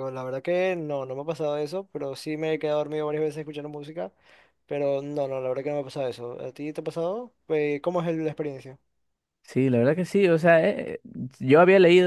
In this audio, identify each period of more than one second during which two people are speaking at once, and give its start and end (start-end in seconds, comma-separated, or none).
none